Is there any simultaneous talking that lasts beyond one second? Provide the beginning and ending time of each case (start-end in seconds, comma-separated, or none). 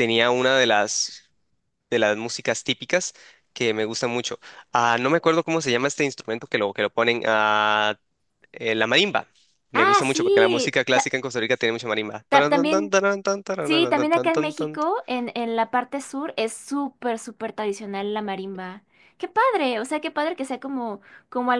9.7-11.1